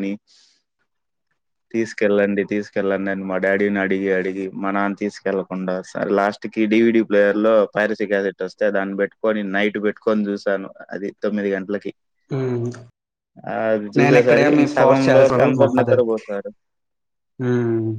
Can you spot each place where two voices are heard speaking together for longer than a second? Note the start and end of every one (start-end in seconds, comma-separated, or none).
14.0-16.0